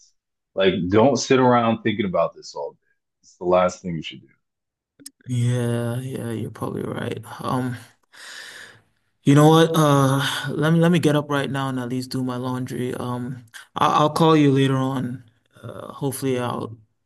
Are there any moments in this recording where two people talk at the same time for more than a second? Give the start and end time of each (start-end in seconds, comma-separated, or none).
none